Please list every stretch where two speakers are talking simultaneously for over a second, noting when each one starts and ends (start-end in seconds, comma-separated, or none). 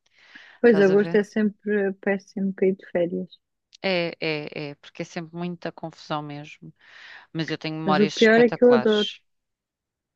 7.8-9.1